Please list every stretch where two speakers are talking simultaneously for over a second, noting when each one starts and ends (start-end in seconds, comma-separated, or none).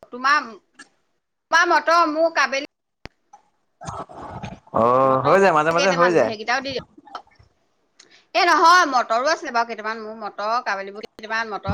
none